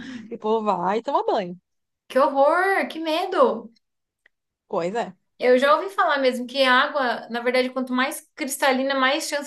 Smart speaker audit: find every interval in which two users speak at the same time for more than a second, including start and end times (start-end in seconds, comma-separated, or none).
none